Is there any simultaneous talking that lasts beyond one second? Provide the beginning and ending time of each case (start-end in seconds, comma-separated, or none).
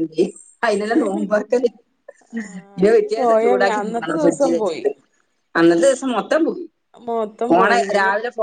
2.8-4.8